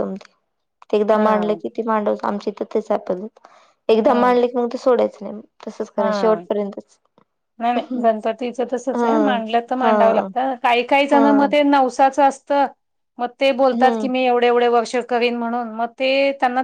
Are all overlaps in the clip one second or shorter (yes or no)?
yes